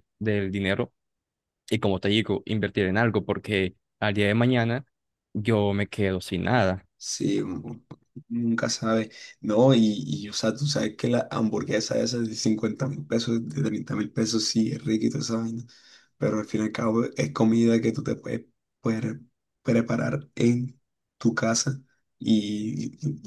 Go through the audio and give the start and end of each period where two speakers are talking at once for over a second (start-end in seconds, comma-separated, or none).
none